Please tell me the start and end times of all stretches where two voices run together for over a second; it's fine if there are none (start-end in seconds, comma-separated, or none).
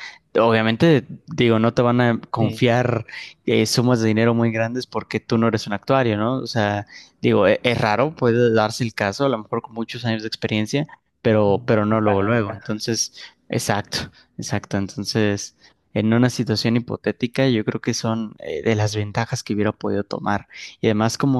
11.4-12.8